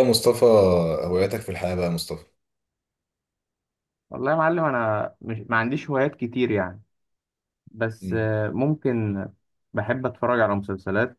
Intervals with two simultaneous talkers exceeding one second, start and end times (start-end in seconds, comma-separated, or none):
none